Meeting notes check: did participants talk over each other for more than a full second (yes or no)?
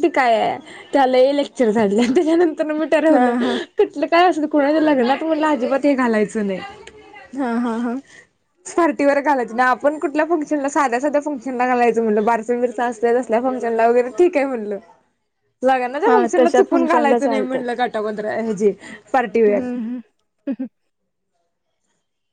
yes